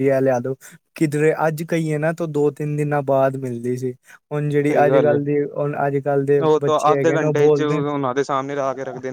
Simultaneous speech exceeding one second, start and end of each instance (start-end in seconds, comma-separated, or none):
6.2-7.9